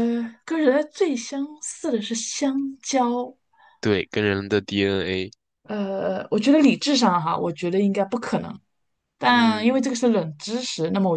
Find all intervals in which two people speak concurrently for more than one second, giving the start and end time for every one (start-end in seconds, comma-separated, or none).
none